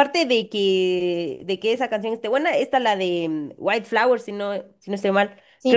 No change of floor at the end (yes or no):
yes